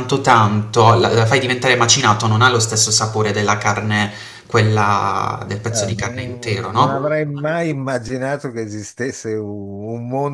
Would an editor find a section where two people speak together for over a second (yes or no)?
yes